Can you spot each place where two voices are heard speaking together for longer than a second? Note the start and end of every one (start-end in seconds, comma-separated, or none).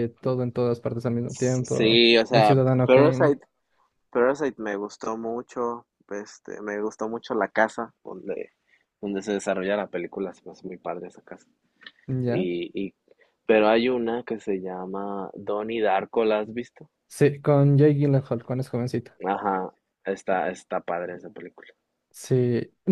1.3-3.4